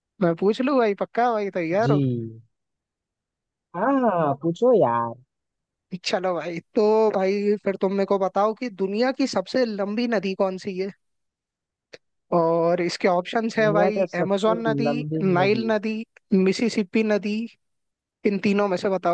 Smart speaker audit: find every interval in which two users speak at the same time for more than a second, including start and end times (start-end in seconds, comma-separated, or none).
13.6-15.7